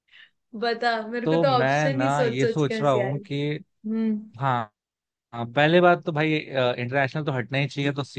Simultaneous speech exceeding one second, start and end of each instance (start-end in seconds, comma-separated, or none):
1.2-3.2